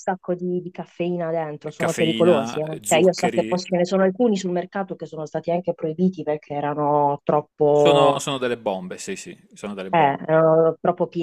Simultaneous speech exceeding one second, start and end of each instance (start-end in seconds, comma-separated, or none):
1.8-3.6